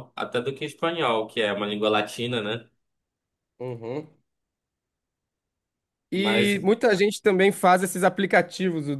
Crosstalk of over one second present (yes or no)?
no